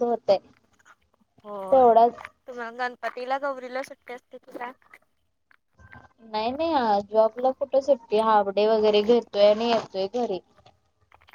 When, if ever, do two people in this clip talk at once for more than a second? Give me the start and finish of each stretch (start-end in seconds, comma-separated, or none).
none